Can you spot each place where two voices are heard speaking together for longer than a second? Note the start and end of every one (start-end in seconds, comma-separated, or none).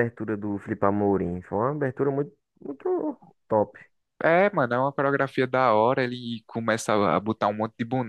none